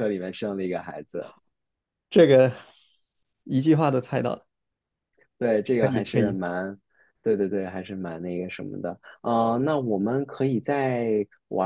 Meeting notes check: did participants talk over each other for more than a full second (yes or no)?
no